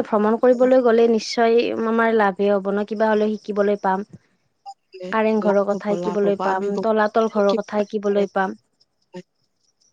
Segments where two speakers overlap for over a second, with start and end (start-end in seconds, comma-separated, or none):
5.2-8.4